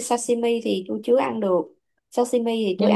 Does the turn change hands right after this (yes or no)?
no